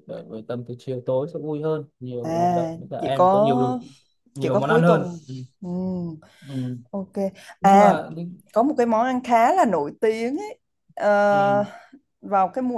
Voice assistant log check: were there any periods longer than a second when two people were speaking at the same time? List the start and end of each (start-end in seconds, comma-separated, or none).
2.2-3.7